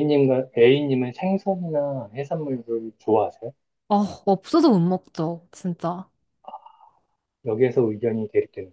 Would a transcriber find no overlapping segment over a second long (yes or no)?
yes